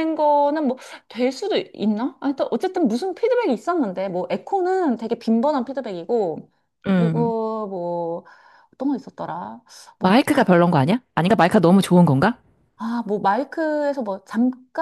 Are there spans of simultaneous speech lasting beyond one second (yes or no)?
no